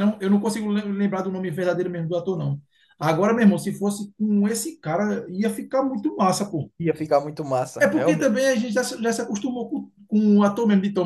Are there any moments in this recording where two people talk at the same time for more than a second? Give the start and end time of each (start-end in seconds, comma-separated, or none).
none